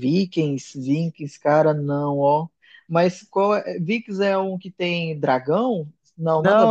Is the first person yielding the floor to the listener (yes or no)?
yes